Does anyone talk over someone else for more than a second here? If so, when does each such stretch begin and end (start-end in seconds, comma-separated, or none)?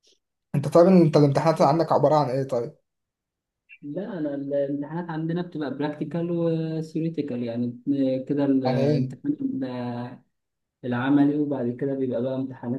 none